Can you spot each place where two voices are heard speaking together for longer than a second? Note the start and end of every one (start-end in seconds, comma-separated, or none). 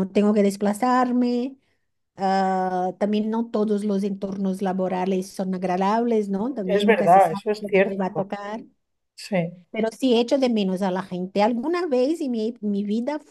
6.7-8.2